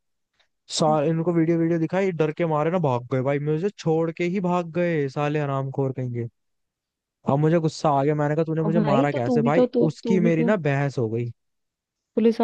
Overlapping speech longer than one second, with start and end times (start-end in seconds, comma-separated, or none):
8.6-10.5